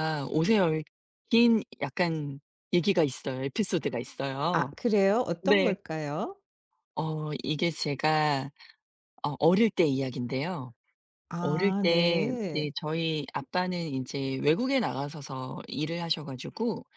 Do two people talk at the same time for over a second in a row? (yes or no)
yes